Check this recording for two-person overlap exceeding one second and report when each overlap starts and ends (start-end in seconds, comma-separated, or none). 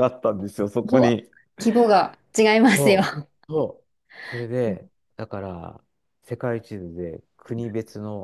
none